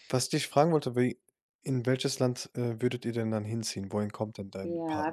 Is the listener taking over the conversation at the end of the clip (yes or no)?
yes